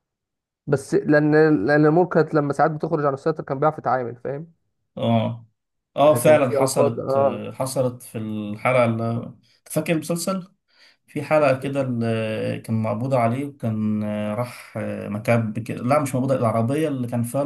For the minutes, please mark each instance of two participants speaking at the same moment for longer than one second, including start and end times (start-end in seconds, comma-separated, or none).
6.0-7.4